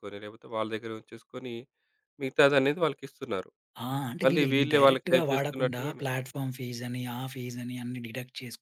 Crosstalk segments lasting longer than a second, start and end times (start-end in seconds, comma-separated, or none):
4.2-6.0